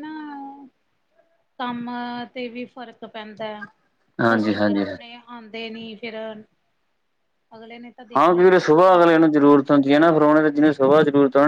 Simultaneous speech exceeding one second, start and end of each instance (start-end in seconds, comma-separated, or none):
8.2-9.6